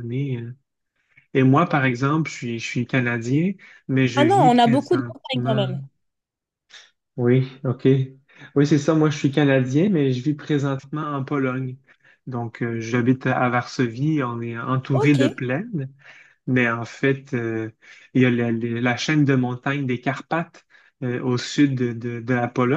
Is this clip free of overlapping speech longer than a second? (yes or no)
no